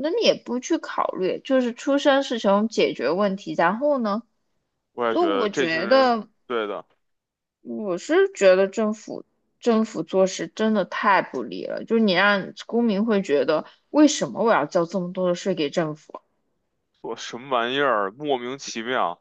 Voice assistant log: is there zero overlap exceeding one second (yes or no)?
no